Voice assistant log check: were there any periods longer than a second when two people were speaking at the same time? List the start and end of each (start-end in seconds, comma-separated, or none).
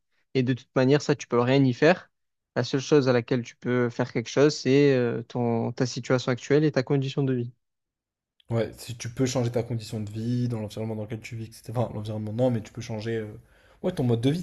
none